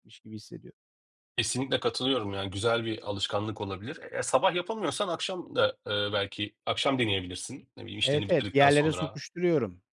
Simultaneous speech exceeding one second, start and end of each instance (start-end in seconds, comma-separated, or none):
8.0-9.2